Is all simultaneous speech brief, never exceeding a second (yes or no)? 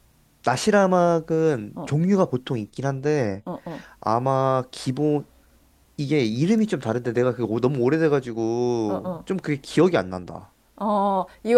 yes